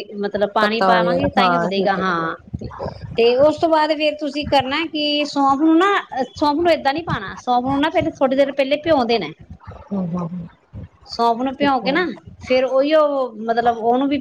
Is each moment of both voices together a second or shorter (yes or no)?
no